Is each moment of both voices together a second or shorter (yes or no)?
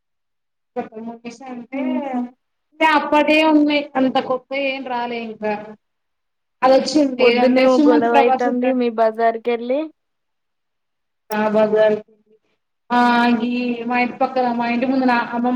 no